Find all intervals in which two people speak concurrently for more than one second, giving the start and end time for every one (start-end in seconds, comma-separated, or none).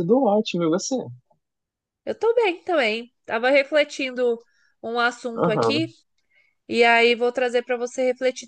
none